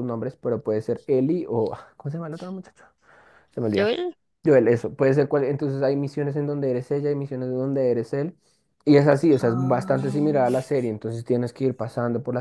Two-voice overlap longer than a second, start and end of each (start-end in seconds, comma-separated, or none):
9.2-10.7